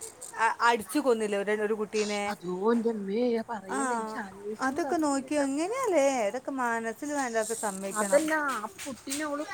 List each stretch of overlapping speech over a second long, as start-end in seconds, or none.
none